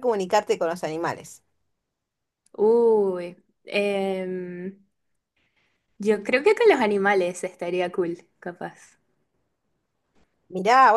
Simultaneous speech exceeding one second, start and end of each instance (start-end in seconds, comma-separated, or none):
none